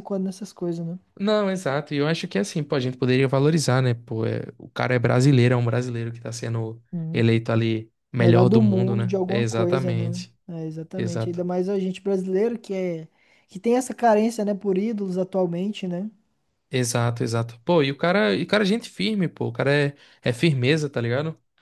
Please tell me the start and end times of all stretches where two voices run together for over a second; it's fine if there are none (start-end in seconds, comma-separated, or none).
8.2-10.3